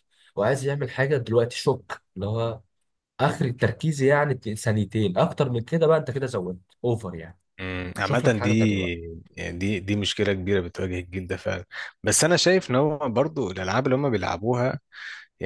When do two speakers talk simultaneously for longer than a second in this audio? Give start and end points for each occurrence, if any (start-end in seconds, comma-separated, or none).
none